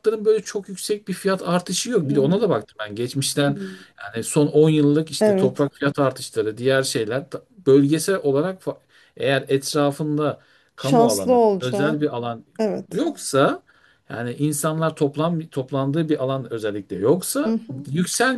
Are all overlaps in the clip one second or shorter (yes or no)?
no